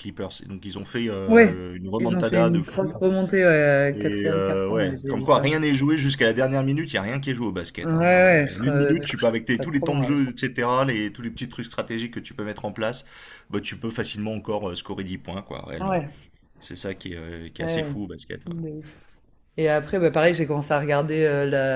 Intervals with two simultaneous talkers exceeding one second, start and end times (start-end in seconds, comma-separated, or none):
1.3-3.0, 3.9-5.5, 7.8-10.2